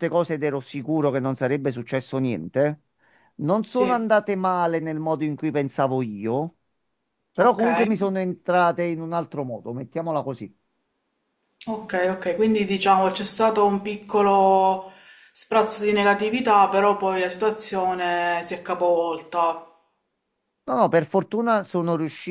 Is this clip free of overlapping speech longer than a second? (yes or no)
yes